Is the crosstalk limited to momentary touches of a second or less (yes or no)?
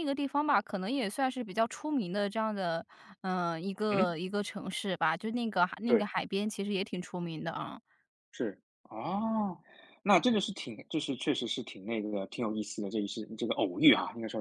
yes